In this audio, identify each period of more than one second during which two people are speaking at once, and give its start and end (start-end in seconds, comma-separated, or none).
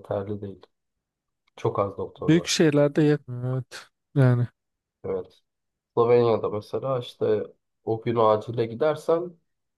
none